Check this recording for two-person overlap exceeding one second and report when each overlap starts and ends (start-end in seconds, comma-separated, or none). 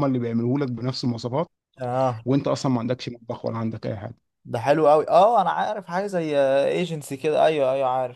none